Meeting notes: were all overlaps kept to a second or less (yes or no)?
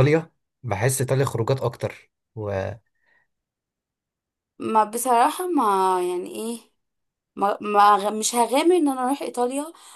yes